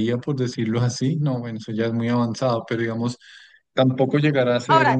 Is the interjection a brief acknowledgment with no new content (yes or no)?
yes